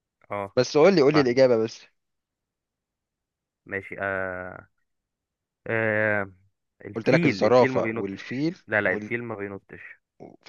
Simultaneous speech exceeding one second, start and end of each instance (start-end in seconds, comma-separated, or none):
7.0-9.1